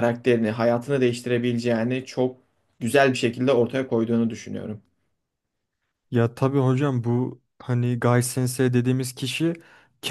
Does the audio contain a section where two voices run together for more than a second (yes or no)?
no